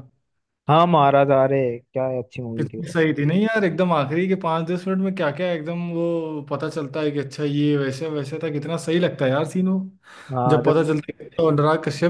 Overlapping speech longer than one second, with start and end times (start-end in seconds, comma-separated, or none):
none